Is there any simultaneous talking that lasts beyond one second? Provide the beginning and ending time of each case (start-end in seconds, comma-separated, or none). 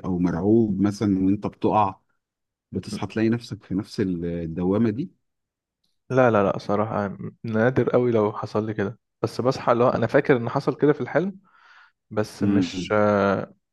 none